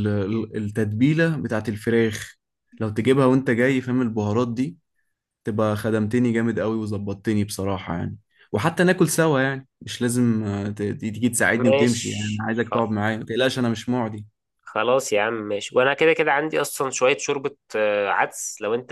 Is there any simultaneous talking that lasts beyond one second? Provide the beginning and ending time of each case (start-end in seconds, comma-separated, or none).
11.5-12.9